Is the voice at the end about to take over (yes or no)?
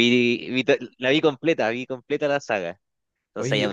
no